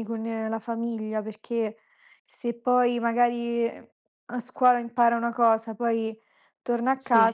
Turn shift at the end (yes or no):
no